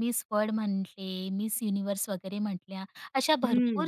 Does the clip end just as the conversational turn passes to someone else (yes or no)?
no